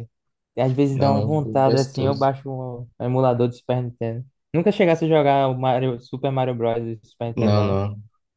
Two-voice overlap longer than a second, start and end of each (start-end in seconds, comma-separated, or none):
0.9-2.3